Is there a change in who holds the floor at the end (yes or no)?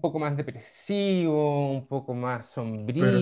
no